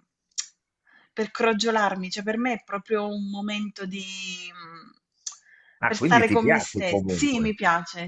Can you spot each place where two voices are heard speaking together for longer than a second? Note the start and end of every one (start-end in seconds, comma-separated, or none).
5.9-7.6